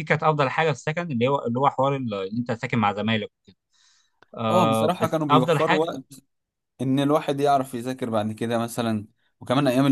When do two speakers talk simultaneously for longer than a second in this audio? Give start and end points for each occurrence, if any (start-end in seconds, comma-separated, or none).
4.5-5.9